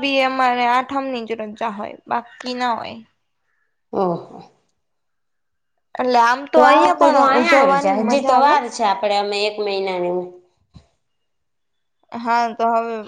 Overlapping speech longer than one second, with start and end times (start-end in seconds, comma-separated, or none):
6.5-8.5